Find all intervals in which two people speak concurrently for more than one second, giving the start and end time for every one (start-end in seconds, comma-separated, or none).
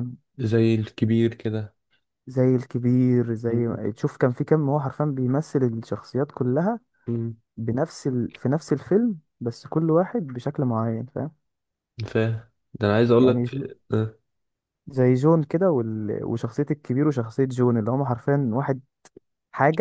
none